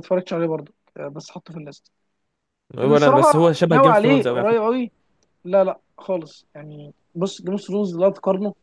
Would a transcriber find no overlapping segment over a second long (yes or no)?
no